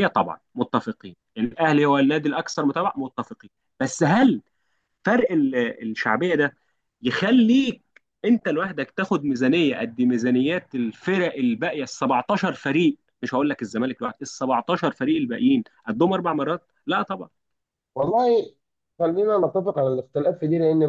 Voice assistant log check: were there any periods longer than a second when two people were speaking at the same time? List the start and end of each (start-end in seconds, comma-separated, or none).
none